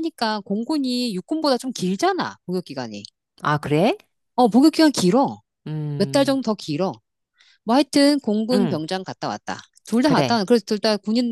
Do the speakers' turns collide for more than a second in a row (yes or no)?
no